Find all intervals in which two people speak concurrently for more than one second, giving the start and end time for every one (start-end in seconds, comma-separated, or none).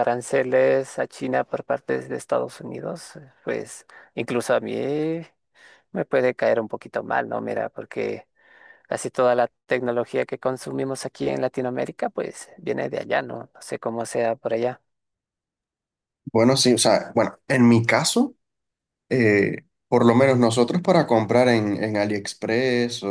none